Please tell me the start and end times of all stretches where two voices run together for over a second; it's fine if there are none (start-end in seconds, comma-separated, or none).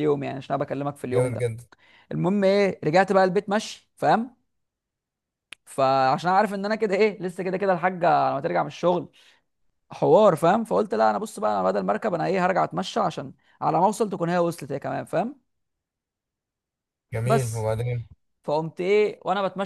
none